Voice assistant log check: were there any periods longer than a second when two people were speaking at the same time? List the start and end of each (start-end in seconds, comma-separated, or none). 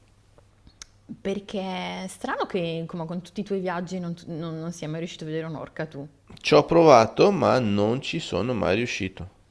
none